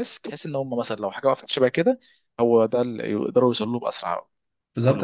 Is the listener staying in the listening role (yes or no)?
no